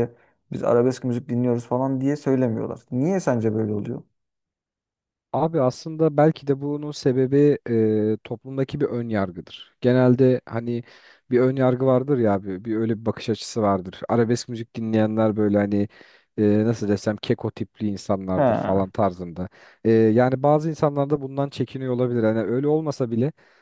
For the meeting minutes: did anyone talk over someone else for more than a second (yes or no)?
no